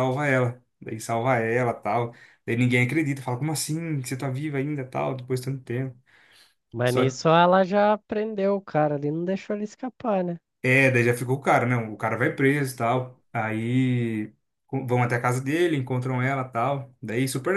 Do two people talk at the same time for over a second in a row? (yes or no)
no